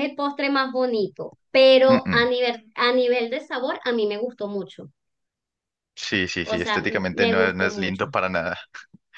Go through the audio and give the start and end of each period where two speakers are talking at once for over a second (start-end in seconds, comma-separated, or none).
6.4-8.1